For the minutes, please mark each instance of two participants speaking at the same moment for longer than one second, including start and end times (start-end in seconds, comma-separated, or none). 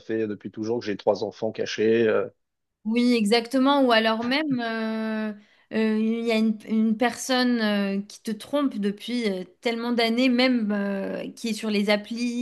none